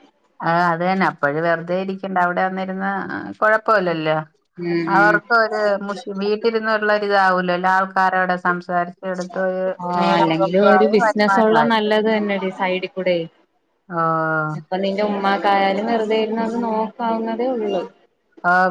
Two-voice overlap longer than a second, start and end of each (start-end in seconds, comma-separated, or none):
10.0-11.8